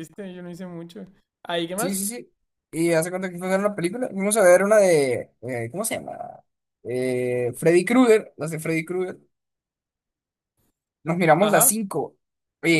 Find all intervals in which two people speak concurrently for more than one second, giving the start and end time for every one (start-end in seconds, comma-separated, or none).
none